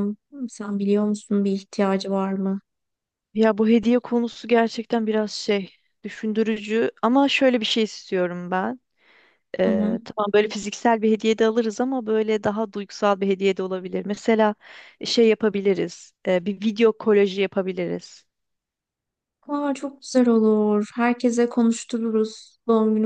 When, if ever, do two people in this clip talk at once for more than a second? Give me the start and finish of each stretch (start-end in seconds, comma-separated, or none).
none